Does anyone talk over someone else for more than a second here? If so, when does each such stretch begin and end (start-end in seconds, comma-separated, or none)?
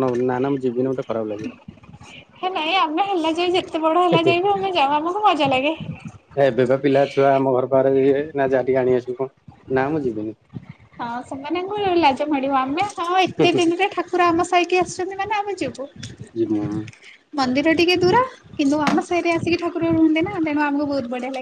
none